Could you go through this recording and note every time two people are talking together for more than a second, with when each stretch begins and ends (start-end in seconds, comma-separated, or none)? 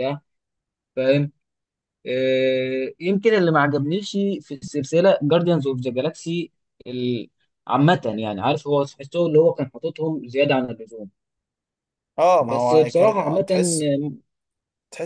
12.4-13.9